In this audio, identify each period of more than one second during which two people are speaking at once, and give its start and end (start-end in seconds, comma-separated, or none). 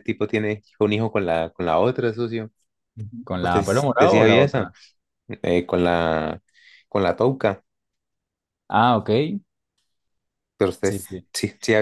3.4-4.7